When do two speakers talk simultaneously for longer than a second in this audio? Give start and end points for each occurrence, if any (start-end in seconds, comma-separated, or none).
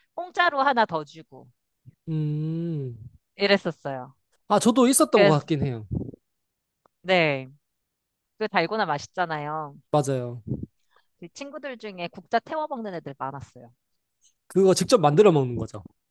none